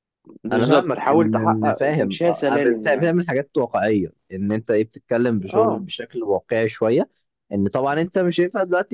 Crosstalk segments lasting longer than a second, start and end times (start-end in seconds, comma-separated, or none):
0.5-3.1